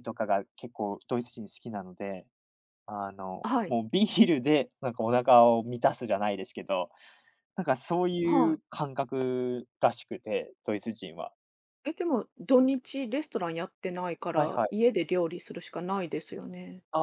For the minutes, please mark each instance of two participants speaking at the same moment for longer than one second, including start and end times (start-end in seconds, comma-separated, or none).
none